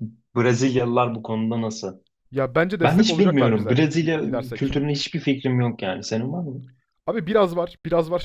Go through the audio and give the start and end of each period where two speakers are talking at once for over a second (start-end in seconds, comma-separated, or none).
2.8-4.7